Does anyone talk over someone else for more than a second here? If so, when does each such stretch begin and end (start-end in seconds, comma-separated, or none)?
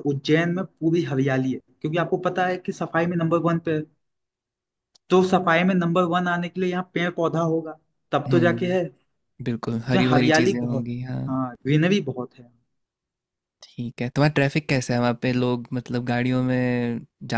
9.6-11.2